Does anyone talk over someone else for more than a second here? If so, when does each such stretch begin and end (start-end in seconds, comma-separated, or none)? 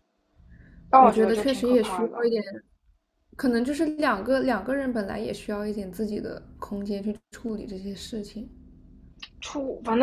1.0-2.3